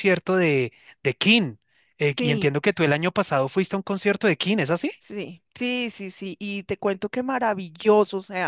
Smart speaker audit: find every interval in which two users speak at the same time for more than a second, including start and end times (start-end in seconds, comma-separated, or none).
none